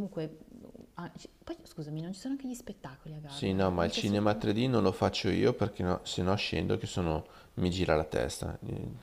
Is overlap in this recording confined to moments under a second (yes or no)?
no